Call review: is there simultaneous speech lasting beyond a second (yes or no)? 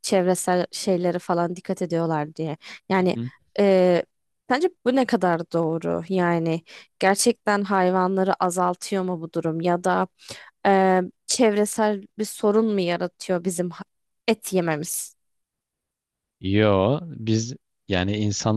no